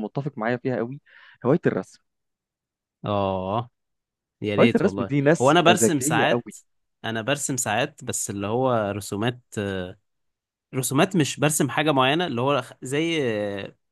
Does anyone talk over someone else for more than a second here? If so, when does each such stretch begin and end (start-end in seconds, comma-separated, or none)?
4.6-6.5